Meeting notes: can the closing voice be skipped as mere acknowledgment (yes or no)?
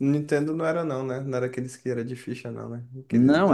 no